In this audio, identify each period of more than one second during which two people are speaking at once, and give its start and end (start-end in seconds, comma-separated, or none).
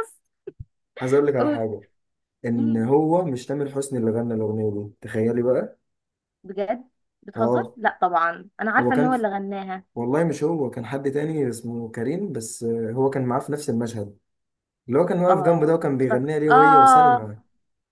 15.3-17.2